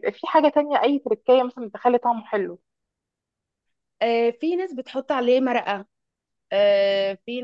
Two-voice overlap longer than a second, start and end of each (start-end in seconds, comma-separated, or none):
none